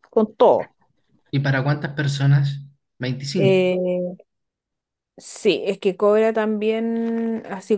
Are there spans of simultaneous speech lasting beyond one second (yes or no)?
no